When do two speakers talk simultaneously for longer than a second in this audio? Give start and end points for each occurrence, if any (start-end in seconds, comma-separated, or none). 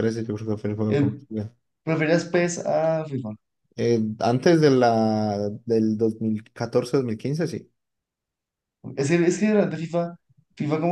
none